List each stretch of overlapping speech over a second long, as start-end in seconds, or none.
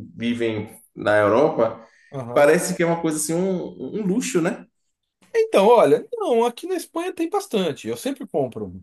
none